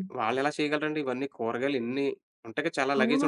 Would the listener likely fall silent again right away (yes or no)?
no